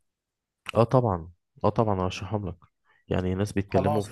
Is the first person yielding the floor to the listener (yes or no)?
no